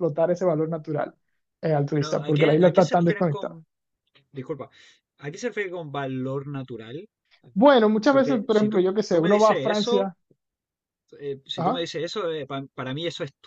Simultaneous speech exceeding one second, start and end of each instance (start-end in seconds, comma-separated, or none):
1.9-3.6, 8.1-10.1